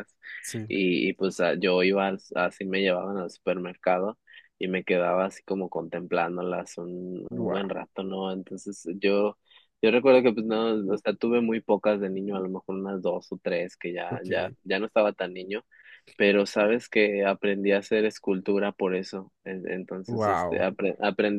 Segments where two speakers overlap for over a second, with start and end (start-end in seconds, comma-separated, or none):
none